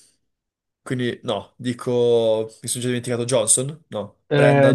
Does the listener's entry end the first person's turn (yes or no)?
yes